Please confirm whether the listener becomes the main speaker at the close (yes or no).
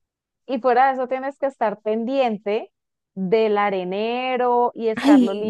no